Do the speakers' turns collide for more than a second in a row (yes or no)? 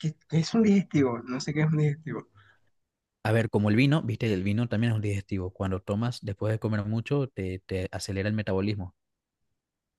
no